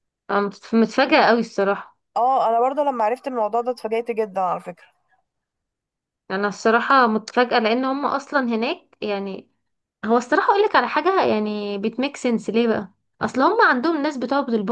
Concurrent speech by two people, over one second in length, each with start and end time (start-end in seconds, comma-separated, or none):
none